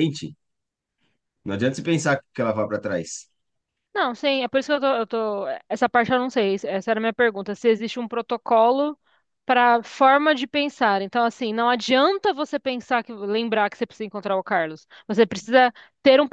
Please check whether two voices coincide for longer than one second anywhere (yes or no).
no